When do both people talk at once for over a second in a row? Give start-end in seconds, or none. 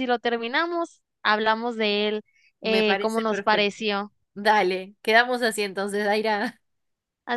2.6-3.8